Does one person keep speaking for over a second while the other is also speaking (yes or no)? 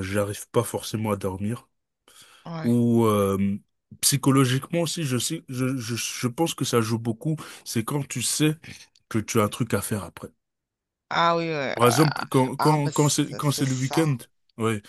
yes